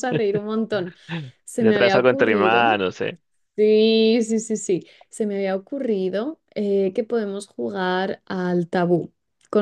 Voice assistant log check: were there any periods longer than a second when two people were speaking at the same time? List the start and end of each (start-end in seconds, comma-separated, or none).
1.6-2.8